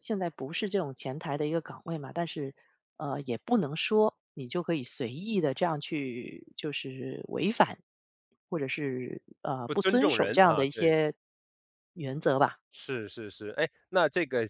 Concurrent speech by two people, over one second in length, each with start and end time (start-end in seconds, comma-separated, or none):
9.6-11.0